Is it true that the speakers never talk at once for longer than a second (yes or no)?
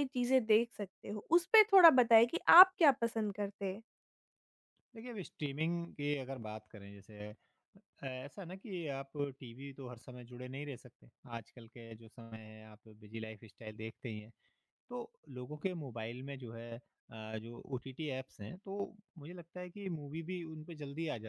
yes